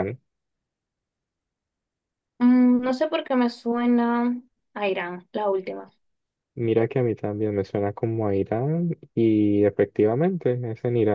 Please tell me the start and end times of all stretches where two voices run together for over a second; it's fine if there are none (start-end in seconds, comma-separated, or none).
none